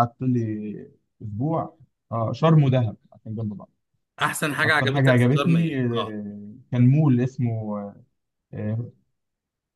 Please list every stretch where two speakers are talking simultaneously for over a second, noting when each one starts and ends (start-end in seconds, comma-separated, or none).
4.6-6.2